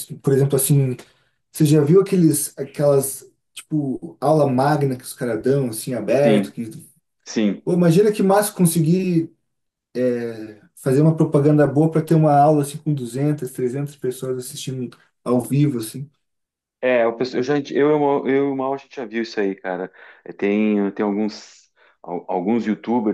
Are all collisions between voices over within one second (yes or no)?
yes